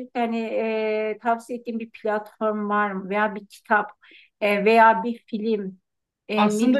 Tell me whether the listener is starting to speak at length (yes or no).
no